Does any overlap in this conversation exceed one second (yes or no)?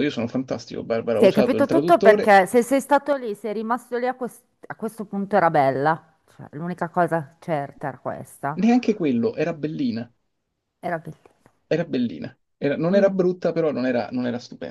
yes